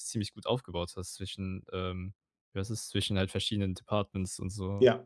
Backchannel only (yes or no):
no